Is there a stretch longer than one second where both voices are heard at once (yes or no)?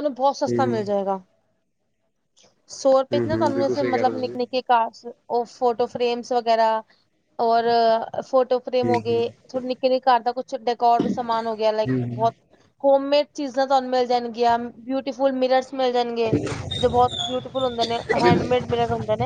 yes